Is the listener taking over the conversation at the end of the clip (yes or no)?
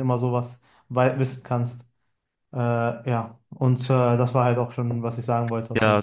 yes